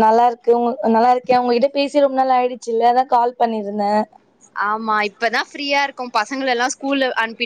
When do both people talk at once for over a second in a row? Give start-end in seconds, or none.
none